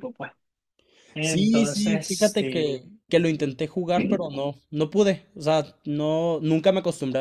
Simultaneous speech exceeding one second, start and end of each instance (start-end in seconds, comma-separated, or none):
1.2-2.7